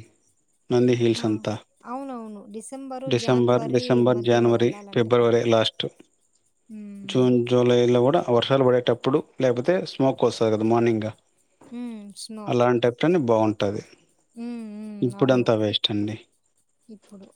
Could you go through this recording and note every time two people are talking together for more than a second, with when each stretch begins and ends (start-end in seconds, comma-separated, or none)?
3.1-5.4